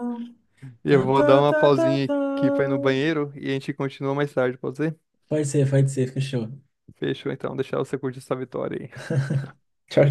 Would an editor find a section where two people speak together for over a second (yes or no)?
yes